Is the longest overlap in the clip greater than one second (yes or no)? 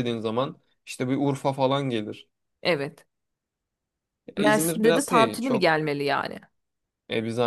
yes